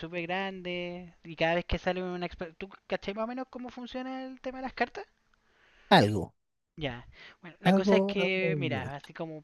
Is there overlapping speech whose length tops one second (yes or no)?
yes